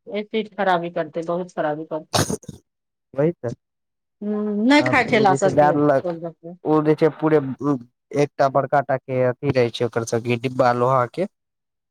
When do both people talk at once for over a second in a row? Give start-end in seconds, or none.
4.7-6.1